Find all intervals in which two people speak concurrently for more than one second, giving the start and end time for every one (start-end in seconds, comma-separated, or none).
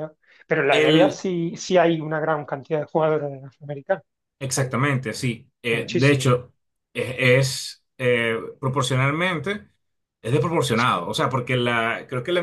none